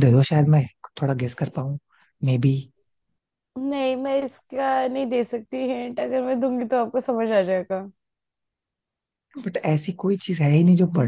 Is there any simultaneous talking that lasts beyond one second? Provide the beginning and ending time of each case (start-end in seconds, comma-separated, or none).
none